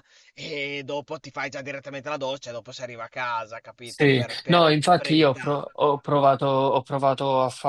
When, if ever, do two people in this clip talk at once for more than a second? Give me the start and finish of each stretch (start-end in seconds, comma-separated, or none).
3.9-5.6